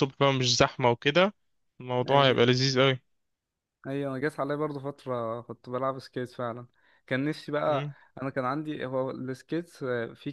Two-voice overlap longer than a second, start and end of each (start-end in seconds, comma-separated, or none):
none